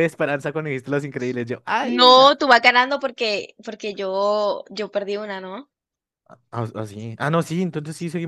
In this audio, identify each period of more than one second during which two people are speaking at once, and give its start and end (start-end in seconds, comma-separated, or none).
none